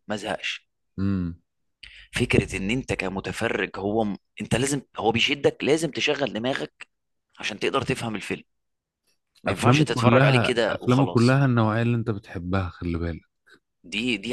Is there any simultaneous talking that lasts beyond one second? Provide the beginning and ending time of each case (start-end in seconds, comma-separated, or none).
9.5-11.4